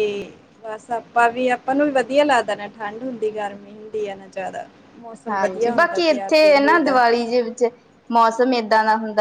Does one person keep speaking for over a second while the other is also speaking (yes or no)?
yes